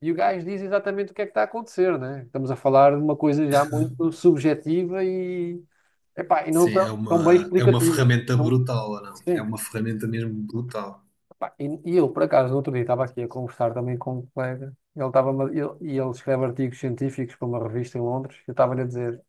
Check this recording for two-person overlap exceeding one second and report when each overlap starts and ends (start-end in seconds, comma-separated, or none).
6.5-8.6